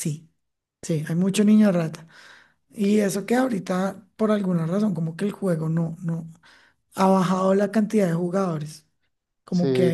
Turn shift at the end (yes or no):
no